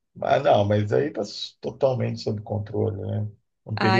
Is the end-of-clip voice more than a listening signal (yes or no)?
yes